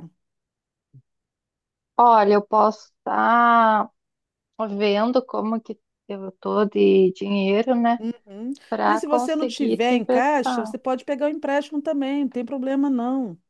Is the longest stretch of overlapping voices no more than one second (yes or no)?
no